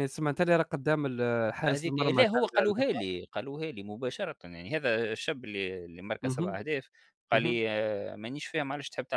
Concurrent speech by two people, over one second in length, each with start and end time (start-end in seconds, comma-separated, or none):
1.7-3.0